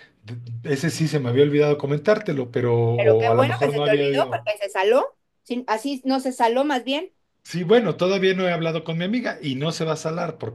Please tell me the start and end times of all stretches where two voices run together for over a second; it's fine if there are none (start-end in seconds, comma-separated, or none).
3.0-4.4